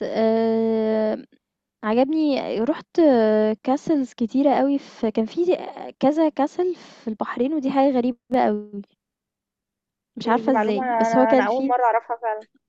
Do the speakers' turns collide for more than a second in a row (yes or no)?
yes